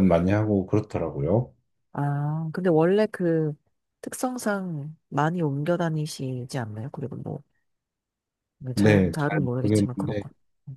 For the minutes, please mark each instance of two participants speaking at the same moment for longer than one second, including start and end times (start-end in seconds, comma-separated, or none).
8.8-10.2